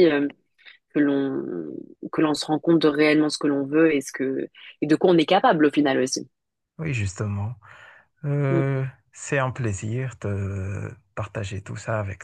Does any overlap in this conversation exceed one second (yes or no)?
no